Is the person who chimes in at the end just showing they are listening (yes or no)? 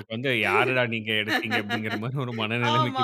no